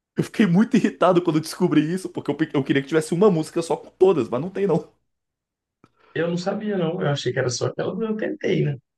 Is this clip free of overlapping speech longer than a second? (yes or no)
yes